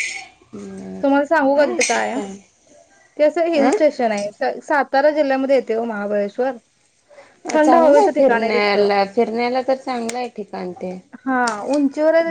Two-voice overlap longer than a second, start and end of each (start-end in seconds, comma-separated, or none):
7.6-8.9